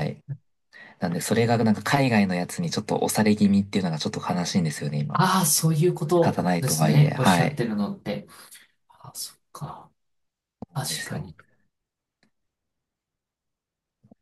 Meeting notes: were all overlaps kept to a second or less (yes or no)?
no